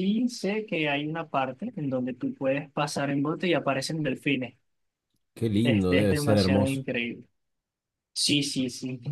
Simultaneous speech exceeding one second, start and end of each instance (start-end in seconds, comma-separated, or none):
5.6-6.8